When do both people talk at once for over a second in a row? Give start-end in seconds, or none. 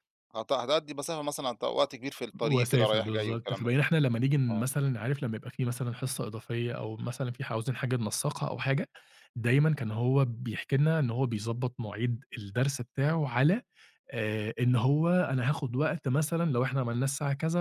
2.4-3.7